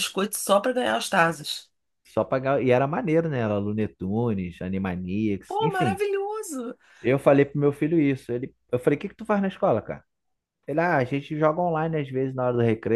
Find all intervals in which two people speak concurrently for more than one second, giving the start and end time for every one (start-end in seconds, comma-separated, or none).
none